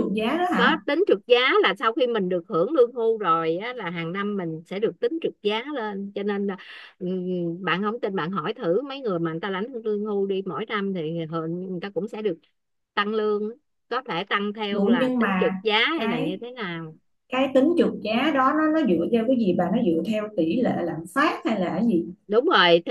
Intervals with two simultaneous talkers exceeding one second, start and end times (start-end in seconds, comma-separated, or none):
14.7-16.4